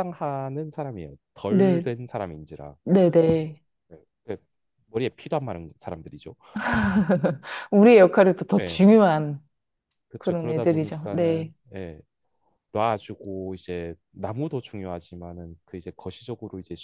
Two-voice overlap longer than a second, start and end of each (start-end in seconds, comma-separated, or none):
10.2-11.5